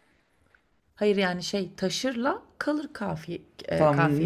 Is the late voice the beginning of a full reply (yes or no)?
yes